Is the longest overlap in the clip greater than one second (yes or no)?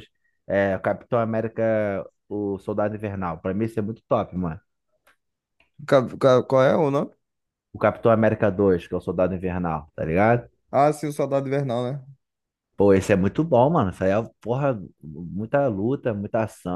no